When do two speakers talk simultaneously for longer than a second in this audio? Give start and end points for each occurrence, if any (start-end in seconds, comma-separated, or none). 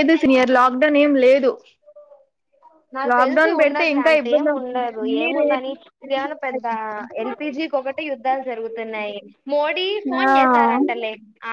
3.1-5.7